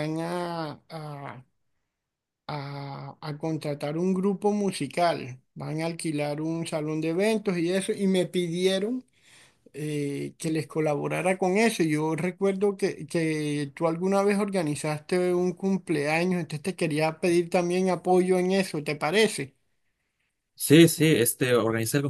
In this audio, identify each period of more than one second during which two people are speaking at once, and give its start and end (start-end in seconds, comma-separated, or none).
none